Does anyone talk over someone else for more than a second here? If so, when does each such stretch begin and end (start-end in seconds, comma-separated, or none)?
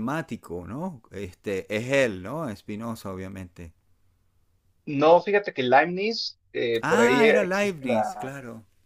6.8-8.3